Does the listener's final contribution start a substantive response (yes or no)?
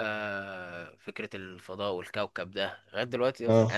no